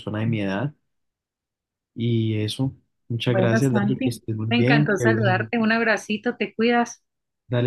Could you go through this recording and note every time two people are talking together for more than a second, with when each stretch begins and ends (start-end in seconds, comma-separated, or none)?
3.3-5.5